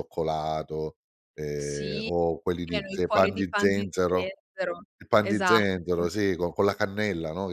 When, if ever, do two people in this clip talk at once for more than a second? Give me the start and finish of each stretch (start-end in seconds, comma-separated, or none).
2.7-4.3